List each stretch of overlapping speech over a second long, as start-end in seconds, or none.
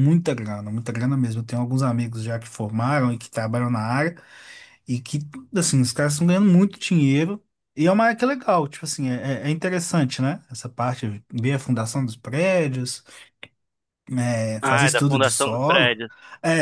14.6-16.0